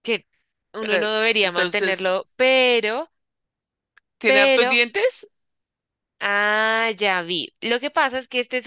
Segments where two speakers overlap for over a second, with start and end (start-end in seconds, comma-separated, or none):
0.8-2.2